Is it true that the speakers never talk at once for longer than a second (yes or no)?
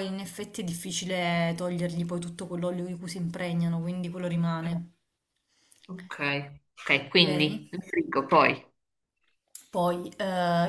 yes